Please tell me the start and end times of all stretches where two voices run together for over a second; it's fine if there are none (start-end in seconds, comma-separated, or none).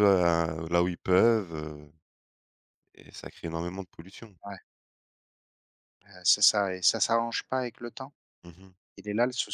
none